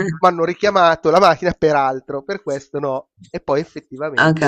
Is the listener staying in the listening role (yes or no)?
yes